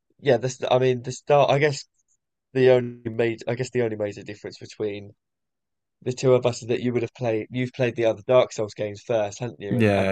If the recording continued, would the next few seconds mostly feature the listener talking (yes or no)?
no